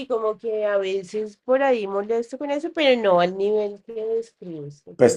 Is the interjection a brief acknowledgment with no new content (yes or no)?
no